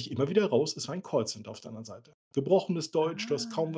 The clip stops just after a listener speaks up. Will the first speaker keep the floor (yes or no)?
yes